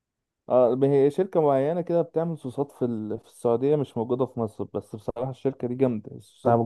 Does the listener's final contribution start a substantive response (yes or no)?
yes